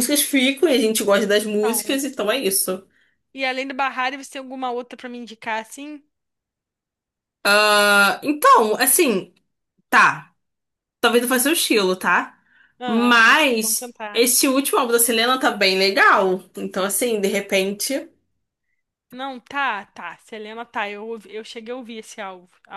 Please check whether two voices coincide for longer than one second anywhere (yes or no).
yes